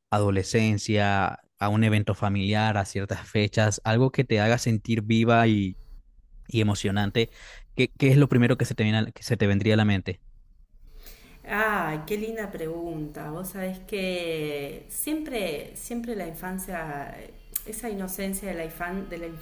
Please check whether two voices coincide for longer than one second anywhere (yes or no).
no